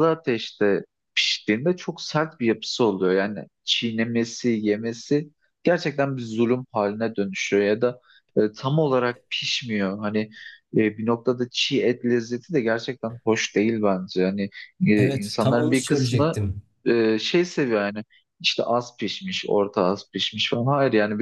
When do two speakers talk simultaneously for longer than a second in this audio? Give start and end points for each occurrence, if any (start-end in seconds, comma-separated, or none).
14.9-16.4